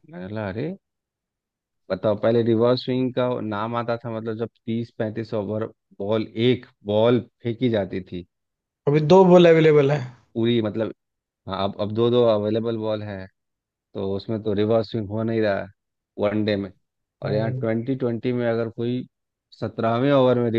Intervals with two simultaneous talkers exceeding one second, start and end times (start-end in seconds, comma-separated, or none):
none